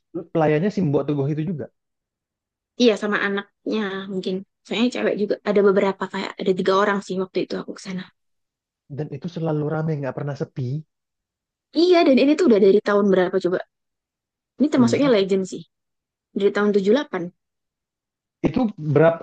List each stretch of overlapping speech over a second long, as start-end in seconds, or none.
none